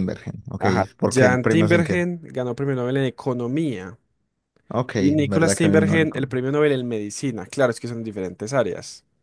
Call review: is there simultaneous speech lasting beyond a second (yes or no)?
yes